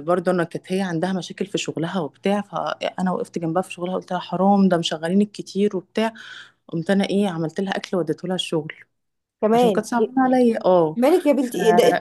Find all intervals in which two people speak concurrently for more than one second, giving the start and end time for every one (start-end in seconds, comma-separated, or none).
none